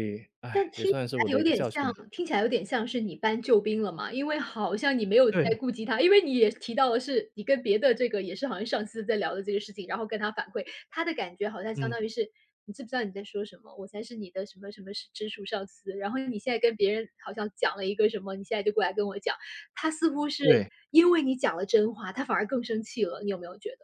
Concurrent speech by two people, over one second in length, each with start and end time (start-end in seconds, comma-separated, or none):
0.5-1.9